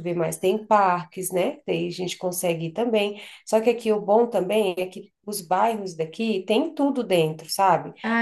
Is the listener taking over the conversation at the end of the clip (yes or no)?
yes